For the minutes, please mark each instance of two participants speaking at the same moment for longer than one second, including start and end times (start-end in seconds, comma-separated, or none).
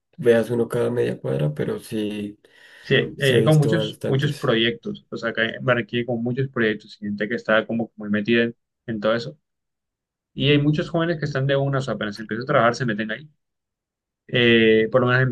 3.2-4.5